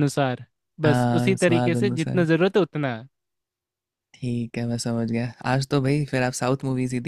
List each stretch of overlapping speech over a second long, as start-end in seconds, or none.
0.8-2.2